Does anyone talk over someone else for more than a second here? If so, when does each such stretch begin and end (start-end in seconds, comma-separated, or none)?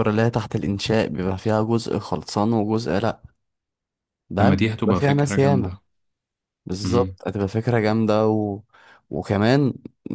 4.4-5.8